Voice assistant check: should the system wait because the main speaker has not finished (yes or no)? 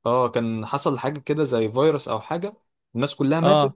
yes